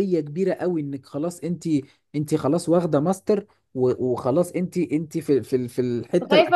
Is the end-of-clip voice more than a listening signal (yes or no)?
yes